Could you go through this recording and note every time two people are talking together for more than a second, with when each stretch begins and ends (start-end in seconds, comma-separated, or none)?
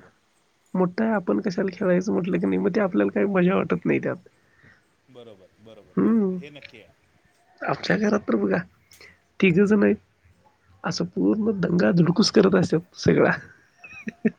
none